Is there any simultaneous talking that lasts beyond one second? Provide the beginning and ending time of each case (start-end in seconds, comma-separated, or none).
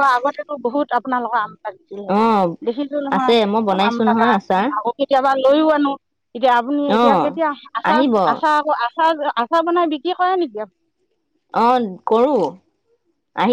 3.1-4.7